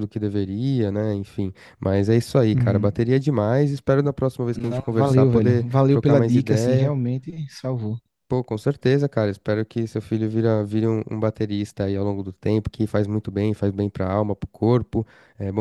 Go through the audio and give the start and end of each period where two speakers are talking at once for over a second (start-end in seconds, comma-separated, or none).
4.5-6.9